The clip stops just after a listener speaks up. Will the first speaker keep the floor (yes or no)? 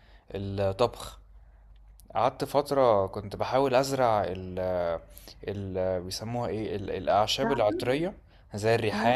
yes